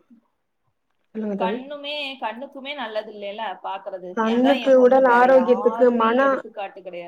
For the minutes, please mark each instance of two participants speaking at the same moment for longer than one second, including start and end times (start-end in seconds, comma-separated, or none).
4.2-6.2